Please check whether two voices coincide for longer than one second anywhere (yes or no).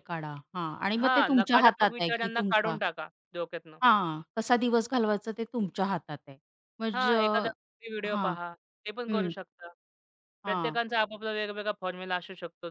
yes